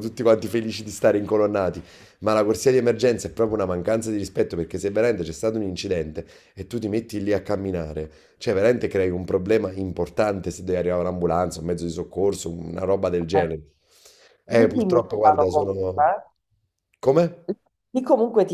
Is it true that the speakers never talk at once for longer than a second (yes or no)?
no